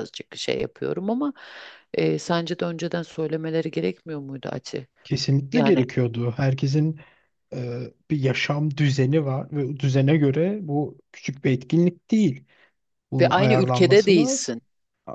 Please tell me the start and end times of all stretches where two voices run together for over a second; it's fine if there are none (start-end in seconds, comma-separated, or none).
13.2-14.5